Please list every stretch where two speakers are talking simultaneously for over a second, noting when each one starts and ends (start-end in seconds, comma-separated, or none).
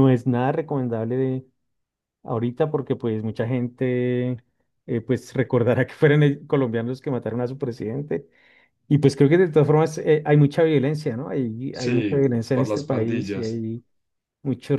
11.7-13.6